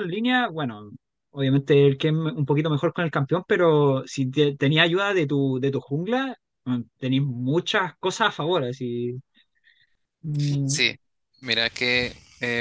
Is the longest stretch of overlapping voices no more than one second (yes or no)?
yes